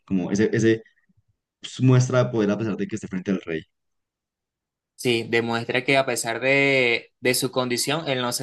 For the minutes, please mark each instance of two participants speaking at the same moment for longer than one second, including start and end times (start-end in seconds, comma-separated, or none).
none